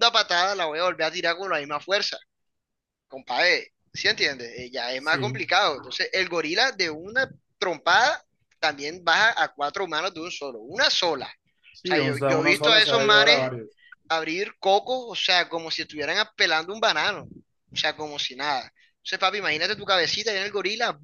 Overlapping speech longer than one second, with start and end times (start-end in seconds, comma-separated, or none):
11.8-13.5